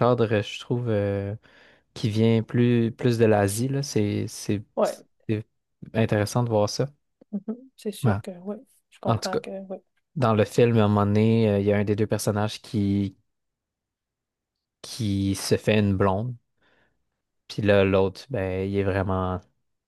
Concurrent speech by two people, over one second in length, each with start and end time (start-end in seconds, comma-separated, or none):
none